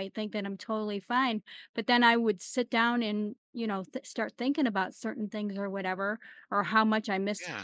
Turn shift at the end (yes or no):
no